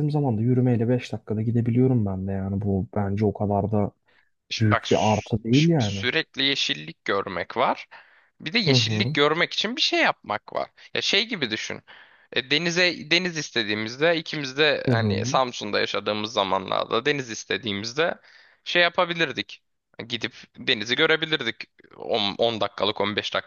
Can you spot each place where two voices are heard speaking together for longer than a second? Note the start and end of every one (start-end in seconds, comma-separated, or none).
4.6-6.0